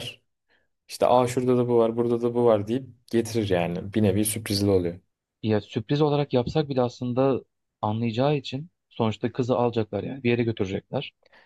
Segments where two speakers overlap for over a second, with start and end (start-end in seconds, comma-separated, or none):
none